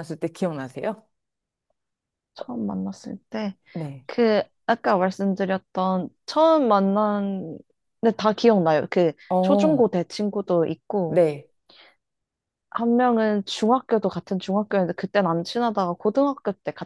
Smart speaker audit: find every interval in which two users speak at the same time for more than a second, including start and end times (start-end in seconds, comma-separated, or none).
none